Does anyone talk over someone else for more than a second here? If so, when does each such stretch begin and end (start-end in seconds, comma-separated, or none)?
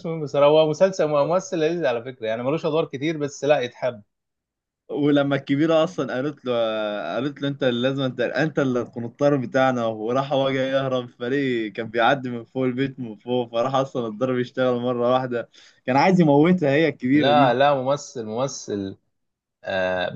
none